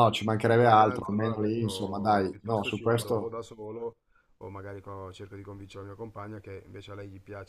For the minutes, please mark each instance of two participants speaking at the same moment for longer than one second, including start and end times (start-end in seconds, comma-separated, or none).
0.6-3.4